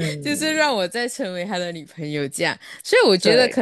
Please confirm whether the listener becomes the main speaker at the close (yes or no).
no